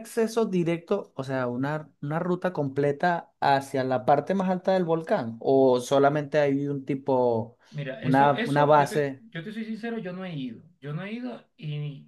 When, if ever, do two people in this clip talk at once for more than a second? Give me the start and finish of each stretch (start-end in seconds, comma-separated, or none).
8.0-9.2